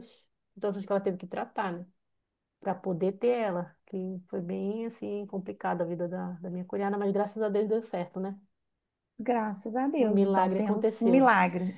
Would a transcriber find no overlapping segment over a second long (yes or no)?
no